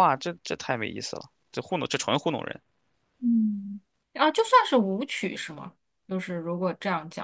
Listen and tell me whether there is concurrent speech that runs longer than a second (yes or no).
no